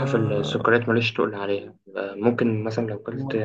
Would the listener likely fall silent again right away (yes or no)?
yes